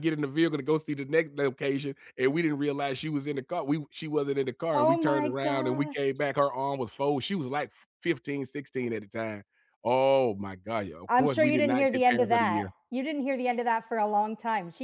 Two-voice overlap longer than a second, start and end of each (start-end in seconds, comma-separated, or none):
4.7-6.0, 11.1-12.7